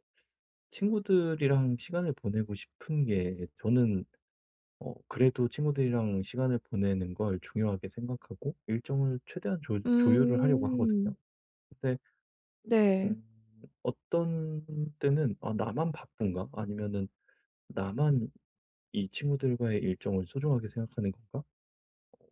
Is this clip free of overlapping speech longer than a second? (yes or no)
no